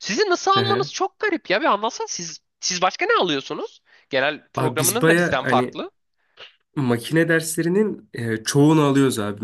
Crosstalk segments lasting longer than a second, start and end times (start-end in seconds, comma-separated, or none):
4.6-5.8